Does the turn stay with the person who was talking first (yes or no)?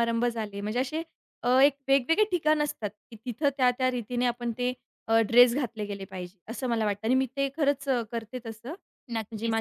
no